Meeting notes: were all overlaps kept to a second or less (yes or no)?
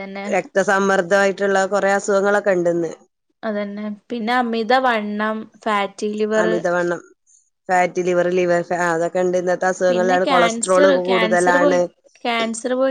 no